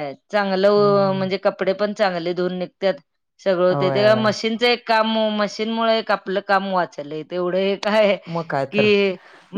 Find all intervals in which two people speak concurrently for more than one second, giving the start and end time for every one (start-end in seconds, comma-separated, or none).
none